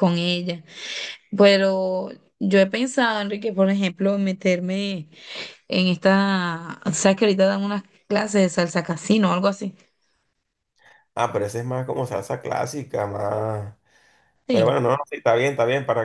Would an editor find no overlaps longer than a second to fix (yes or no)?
yes